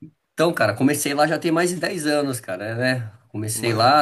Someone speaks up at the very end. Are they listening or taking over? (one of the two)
listening